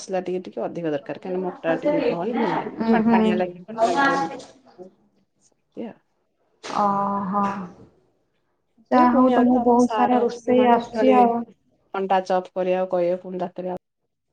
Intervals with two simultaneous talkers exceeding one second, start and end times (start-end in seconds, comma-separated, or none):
8.9-11.2